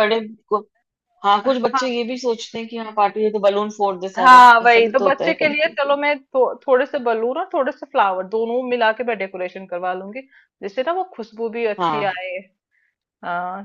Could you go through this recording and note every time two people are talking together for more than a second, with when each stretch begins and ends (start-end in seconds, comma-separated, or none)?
4.3-6.0